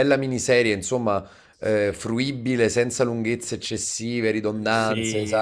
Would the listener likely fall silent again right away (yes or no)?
no